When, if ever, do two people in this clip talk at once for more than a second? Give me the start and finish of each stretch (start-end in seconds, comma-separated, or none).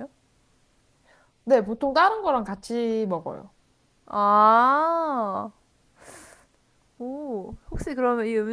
none